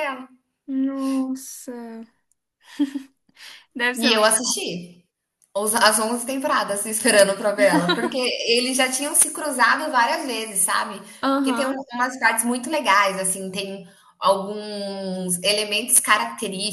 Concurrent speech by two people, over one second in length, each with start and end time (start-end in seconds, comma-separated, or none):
none